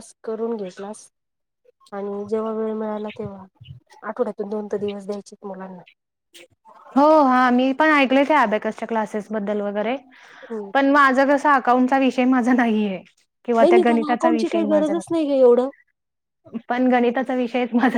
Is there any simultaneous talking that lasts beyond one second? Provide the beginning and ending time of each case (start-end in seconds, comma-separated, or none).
13.6-14.9